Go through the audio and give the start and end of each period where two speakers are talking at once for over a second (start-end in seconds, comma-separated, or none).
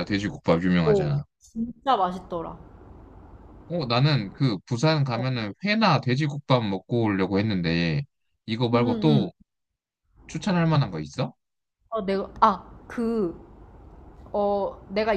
none